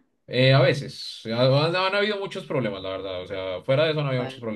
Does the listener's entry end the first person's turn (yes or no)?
no